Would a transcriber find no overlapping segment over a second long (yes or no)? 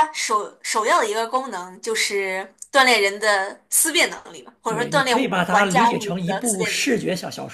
no